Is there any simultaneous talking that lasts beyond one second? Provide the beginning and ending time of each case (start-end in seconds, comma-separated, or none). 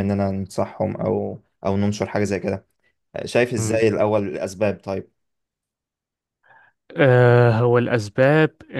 none